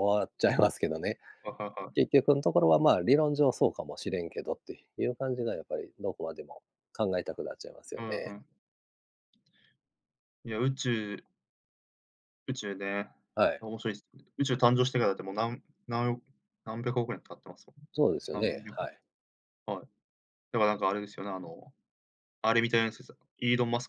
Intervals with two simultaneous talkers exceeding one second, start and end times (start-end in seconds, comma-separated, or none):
none